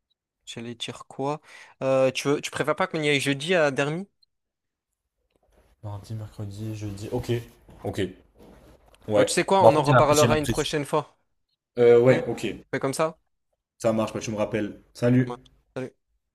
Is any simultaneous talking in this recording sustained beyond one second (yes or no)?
yes